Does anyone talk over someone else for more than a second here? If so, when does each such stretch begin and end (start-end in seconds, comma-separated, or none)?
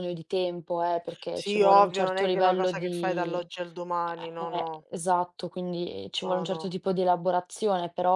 1.3-3.4